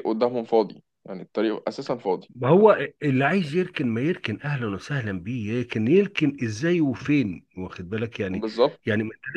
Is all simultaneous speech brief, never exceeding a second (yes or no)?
yes